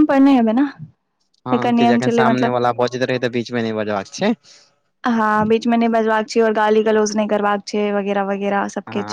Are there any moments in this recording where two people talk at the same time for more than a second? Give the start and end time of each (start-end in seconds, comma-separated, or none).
none